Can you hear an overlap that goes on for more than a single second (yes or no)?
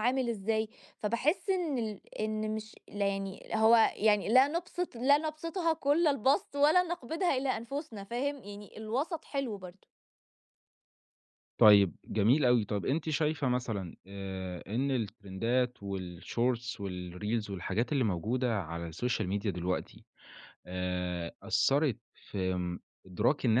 no